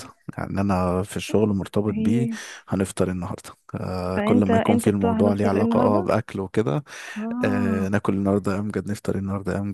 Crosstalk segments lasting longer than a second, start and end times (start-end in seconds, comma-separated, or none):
4.2-6.1